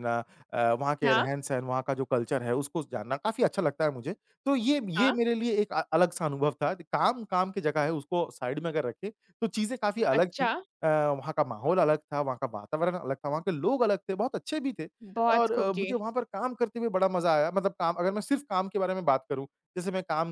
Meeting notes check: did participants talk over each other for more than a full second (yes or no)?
no